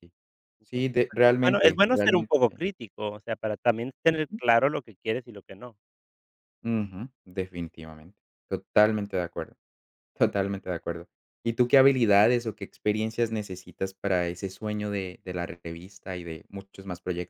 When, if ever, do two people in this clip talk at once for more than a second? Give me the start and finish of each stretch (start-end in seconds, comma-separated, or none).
0.6-2.3